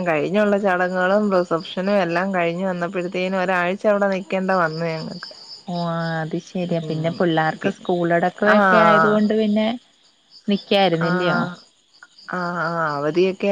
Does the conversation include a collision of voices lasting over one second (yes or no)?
no